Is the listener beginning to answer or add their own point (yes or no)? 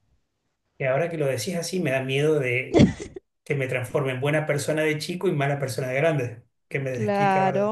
yes